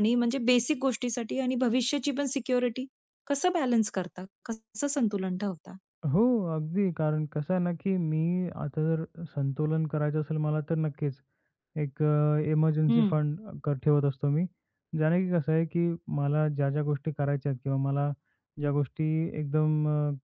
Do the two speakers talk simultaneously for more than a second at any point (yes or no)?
no